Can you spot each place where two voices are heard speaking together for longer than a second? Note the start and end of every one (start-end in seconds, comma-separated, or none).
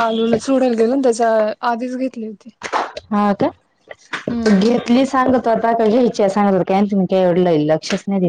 none